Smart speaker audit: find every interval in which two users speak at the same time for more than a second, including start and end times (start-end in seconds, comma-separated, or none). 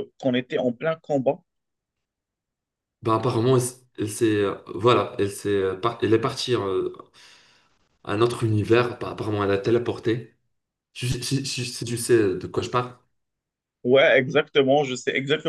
none